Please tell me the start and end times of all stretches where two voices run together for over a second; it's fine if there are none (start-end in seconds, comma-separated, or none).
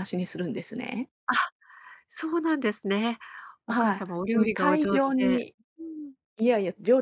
3.7-5.5